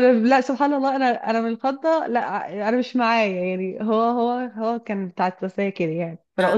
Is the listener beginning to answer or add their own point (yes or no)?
no